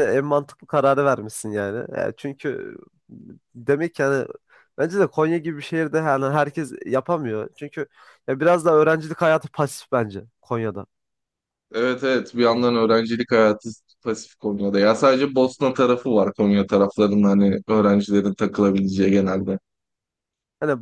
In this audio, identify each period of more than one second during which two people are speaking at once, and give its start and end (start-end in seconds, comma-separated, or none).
none